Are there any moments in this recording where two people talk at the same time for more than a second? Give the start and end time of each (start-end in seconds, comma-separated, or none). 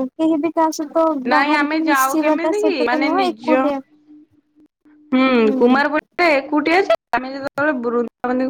1.3-3.5